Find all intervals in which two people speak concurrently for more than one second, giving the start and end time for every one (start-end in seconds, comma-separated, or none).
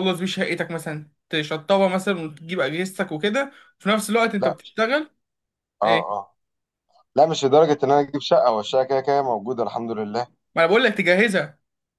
none